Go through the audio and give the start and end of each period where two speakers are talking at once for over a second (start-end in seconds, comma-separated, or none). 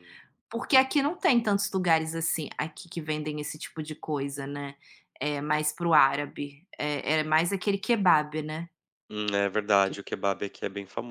none